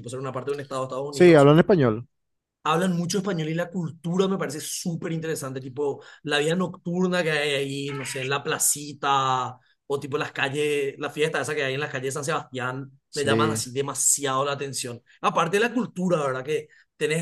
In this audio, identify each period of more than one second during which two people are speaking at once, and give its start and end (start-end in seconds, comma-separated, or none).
none